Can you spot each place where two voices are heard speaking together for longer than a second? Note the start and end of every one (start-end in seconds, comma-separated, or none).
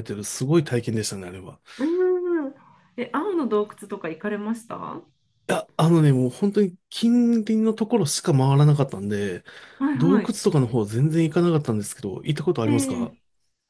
none